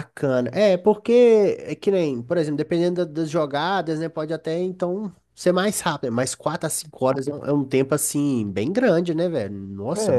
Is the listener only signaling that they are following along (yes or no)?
no